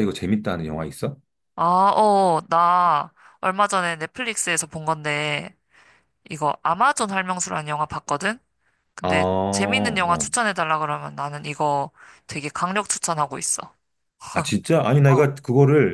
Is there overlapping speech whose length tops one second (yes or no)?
yes